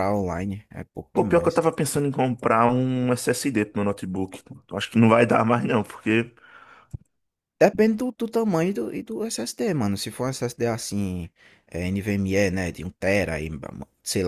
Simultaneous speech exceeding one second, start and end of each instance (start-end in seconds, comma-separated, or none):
none